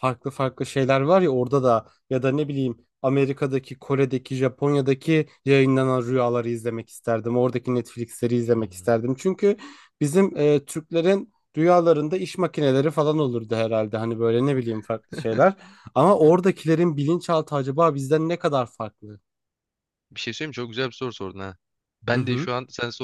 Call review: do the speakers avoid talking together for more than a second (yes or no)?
yes